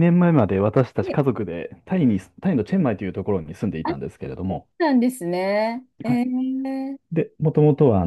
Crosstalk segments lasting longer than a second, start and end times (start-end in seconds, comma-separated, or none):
none